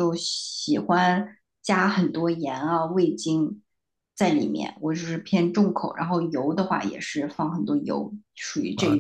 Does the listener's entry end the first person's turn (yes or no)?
yes